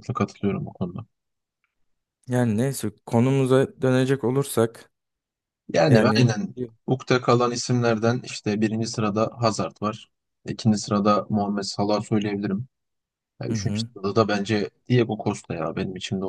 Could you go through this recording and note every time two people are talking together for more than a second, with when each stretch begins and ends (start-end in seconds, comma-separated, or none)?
none